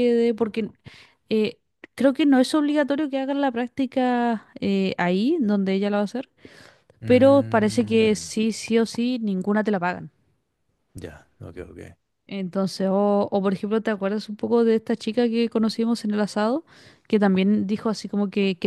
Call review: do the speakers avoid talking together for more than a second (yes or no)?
no